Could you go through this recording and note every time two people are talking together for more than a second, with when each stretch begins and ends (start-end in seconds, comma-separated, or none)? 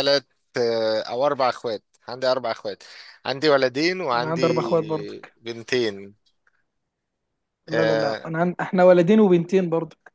4.1-5.4